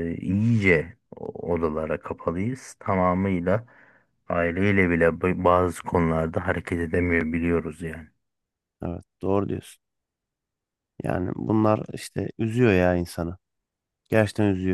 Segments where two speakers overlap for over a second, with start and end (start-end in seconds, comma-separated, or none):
none